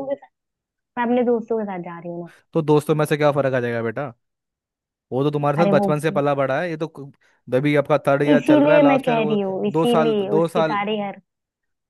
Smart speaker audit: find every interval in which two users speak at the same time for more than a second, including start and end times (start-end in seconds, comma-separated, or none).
8.3-10.8